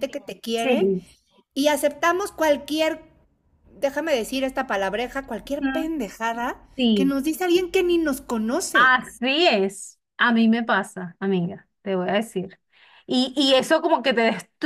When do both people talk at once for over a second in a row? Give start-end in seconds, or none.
none